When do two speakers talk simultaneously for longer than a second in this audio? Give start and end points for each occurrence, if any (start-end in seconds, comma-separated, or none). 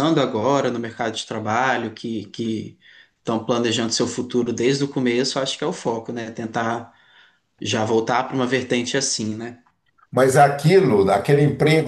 none